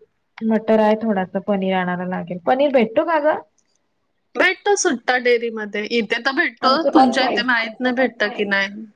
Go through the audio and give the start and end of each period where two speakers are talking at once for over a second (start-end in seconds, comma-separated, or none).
6.7-8.4